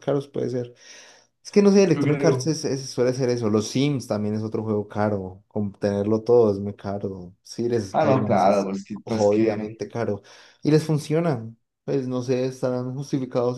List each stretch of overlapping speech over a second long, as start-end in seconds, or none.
7.9-9.8